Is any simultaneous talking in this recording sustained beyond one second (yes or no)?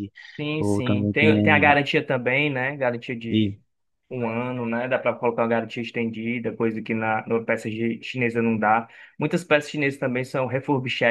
yes